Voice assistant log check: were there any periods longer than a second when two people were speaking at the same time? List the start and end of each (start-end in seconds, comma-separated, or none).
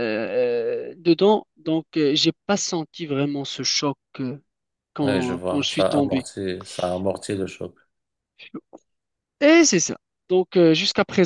5.0-6.3